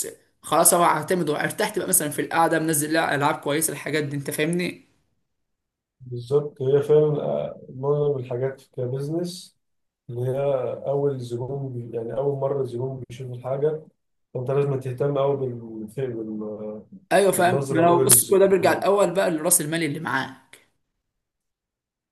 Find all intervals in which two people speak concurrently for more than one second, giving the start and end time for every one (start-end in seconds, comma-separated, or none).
17.4-18.9